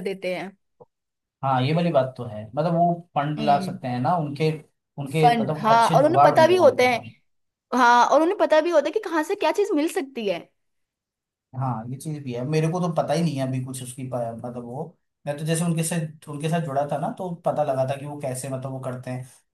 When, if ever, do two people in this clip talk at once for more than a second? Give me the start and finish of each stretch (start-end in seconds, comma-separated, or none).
5.2-7.0